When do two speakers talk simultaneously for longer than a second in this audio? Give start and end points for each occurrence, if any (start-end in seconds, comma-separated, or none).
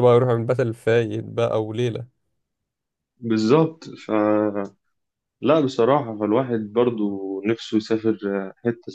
none